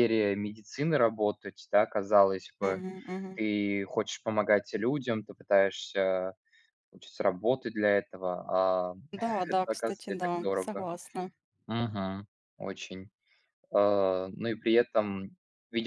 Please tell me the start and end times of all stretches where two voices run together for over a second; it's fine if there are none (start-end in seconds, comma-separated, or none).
9.5-10.9